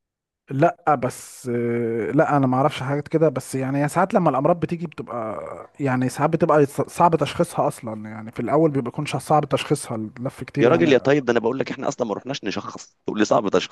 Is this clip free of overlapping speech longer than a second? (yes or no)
yes